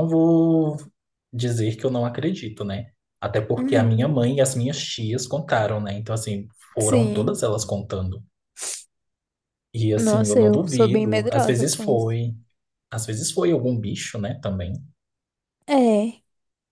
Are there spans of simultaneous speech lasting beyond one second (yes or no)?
yes